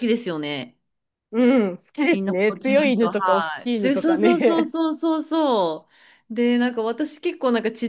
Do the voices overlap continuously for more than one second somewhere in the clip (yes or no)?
yes